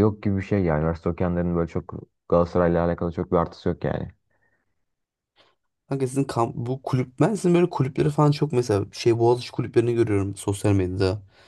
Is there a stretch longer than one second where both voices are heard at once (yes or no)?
no